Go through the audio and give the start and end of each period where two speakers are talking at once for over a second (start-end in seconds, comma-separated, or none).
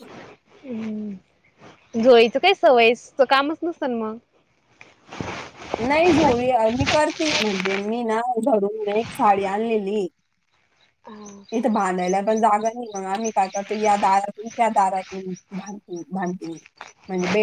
none